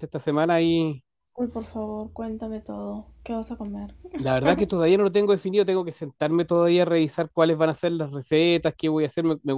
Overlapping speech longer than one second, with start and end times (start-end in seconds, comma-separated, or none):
none